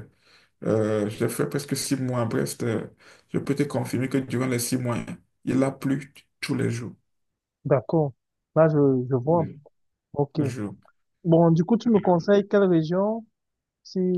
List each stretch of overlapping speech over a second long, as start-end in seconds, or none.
none